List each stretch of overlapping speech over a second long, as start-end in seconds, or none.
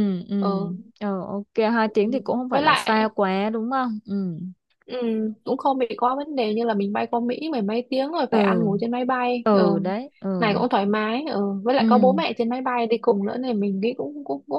none